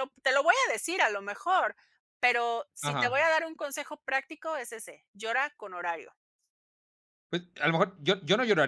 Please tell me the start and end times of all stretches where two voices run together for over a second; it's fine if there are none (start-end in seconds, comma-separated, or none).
none